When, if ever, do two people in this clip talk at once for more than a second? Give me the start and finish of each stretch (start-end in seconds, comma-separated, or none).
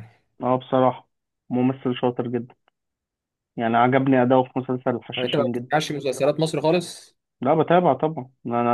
none